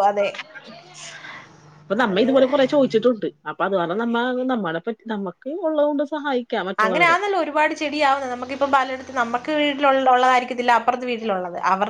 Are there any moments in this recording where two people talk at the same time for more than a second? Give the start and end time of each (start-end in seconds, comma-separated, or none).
none